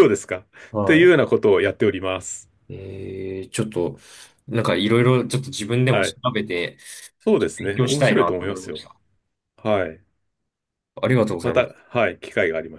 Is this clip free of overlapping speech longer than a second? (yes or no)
no